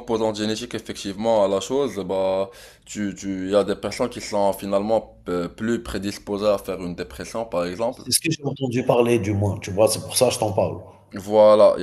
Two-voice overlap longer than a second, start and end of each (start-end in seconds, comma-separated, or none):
none